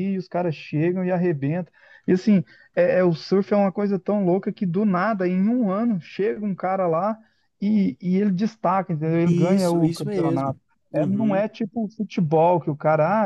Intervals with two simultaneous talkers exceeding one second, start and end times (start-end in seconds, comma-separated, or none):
9.2-11.4